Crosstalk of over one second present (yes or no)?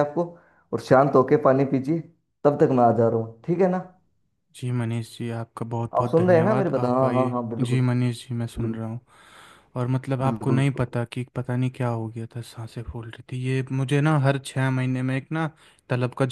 yes